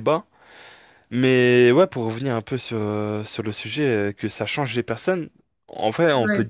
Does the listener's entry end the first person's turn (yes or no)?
no